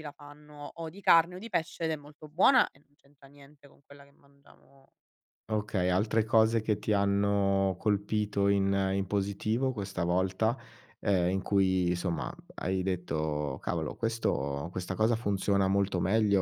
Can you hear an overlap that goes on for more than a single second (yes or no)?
no